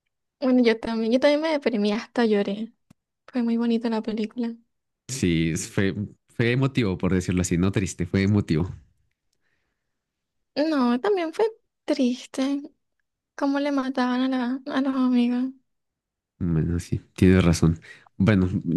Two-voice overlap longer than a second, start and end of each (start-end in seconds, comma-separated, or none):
none